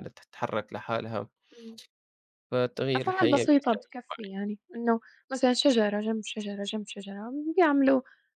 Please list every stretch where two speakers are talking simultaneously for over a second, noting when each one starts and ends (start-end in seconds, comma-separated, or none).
3.0-4.4